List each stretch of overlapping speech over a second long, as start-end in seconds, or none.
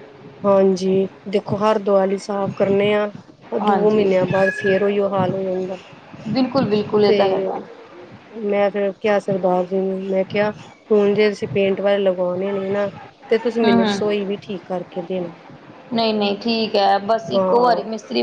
none